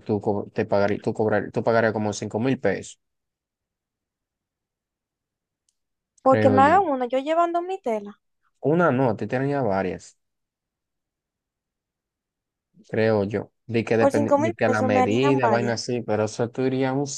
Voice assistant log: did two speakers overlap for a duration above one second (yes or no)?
yes